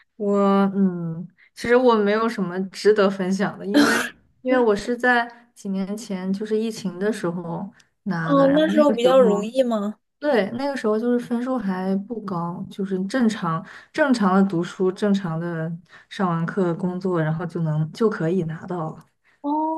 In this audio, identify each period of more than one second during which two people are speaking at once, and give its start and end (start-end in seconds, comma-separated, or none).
8.2-9.4